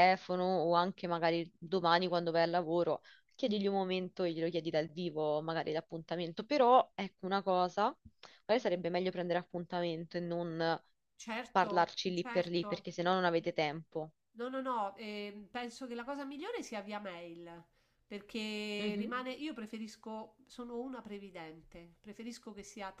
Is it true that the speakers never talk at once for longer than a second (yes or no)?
no